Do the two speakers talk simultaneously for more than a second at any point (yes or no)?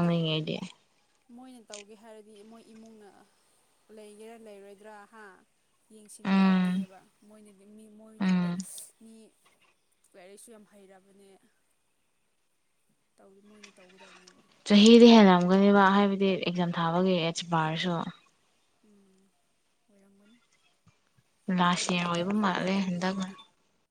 yes